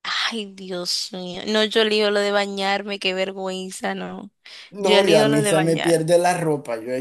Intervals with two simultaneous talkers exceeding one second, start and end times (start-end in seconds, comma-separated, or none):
4.8-6.1